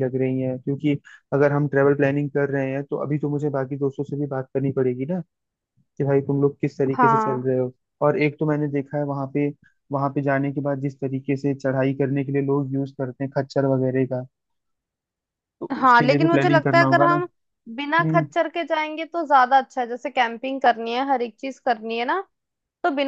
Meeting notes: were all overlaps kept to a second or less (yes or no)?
no